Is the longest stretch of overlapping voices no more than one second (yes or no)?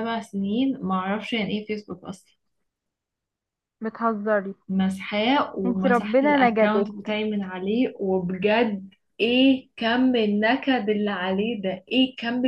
no